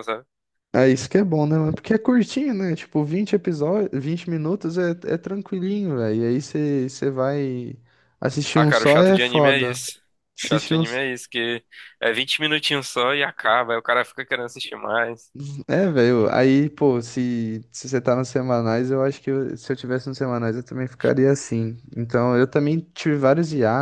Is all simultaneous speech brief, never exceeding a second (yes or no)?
no